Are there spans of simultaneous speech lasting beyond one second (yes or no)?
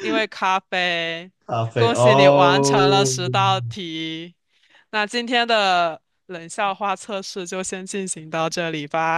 yes